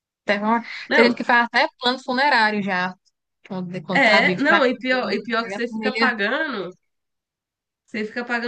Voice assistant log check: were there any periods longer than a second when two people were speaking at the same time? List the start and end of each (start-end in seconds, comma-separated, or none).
3.9-6.1